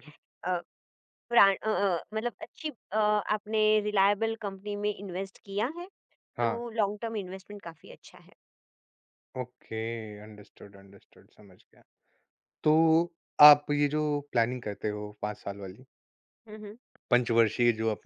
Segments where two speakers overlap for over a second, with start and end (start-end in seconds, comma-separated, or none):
none